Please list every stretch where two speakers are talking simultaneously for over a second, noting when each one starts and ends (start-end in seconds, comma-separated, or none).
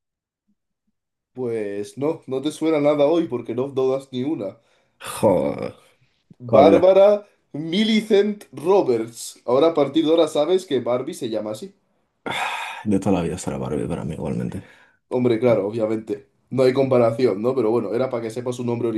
none